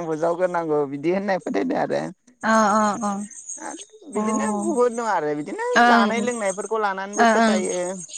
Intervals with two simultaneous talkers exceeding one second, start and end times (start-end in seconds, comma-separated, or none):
5.8-7.5